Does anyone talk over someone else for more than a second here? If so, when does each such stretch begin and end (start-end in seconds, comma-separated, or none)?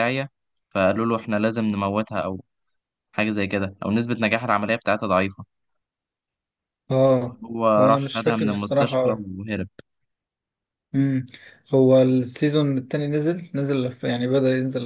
7.8-9.2